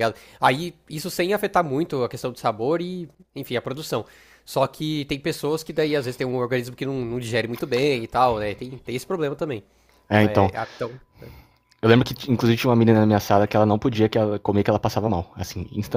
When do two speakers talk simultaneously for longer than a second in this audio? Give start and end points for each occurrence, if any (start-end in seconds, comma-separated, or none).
none